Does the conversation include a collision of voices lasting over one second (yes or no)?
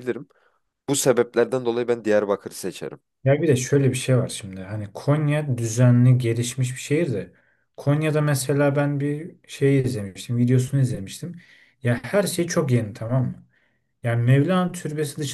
no